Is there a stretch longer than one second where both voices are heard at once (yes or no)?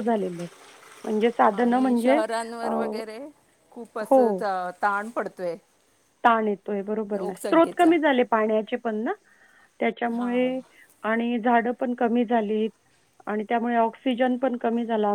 no